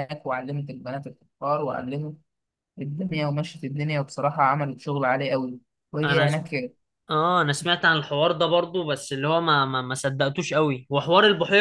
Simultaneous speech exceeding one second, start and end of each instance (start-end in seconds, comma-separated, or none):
none